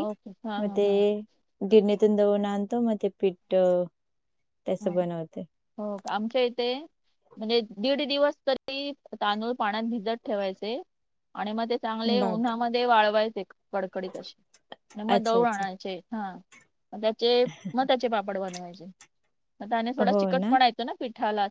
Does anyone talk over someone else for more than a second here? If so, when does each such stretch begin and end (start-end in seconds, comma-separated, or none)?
none